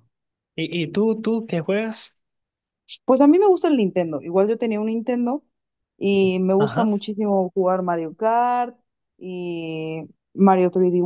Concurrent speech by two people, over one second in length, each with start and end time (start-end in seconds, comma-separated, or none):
none